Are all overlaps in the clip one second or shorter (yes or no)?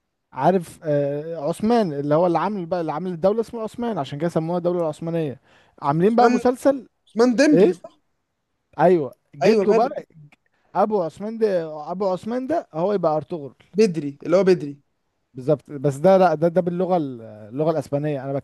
yes